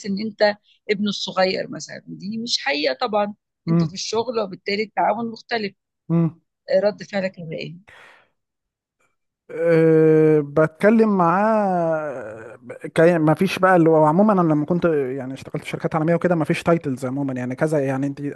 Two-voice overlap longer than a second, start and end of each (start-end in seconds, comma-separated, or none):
none